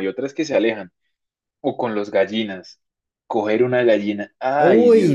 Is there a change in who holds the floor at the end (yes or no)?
yes